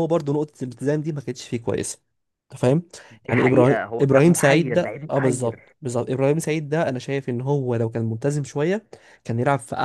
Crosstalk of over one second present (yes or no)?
yes